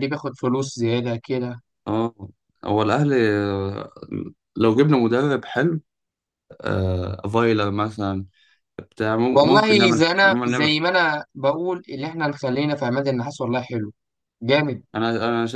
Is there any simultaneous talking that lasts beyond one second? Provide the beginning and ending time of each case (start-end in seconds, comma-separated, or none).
9.3-10.7